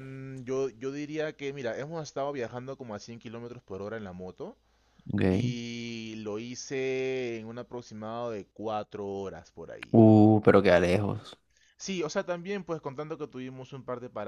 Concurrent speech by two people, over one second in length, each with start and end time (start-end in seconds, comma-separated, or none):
none